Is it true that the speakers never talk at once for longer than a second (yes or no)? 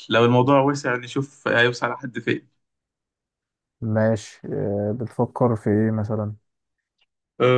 yes